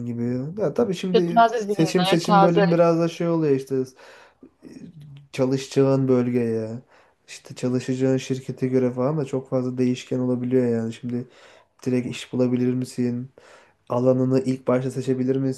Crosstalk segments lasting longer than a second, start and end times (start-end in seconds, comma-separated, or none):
1.1-2.6